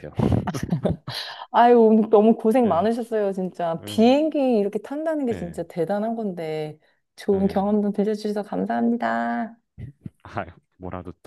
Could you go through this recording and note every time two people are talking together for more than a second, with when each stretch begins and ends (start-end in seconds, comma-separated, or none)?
none